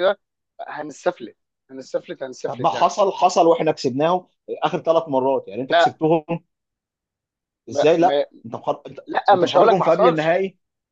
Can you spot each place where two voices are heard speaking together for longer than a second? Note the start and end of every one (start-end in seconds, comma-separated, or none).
9.1-10.4